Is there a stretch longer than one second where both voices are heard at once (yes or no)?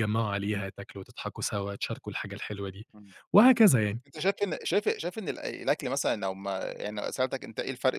no